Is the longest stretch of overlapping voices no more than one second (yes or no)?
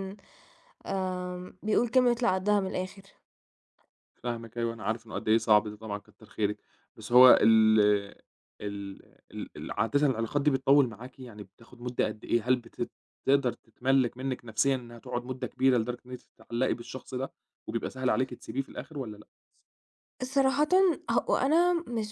yes